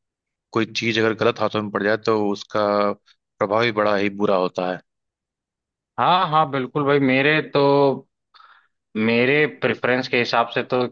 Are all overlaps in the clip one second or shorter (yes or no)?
yes